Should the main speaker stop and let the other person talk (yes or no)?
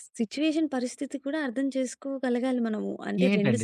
yes